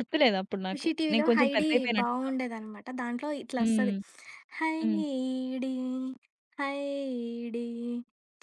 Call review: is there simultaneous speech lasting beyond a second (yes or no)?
yes